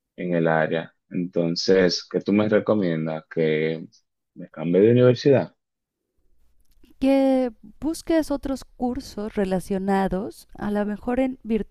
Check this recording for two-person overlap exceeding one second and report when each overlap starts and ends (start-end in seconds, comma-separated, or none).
none